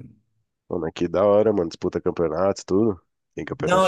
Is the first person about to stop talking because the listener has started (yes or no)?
yes